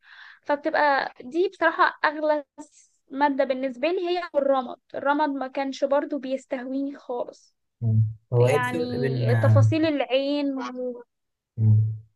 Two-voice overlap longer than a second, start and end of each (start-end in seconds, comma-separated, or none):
8.4-9.6